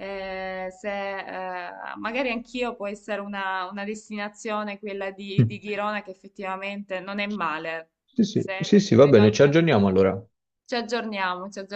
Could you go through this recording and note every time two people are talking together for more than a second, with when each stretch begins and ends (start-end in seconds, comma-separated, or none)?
8.3-10.0